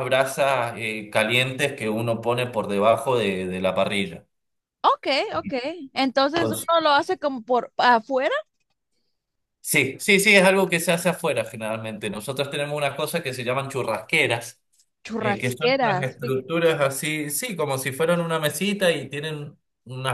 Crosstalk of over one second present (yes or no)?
yes